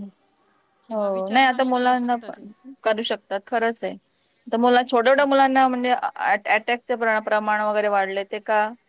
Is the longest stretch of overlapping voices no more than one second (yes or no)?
no